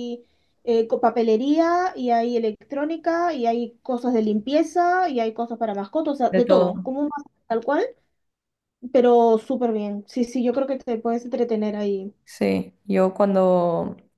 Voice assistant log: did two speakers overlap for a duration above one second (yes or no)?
no